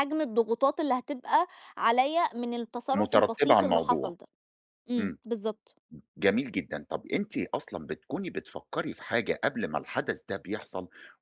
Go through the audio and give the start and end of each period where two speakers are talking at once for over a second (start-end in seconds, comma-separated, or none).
2.9-4.2